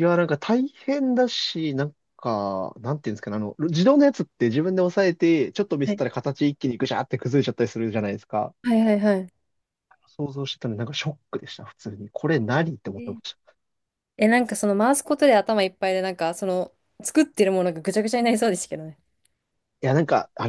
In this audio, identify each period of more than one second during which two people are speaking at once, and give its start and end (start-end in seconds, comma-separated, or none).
none